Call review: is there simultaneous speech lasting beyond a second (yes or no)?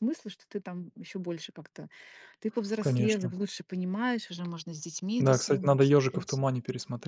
yes